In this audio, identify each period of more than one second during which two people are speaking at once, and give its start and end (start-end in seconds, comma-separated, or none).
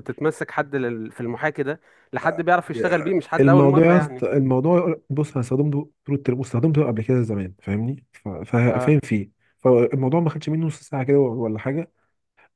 2.7-4.2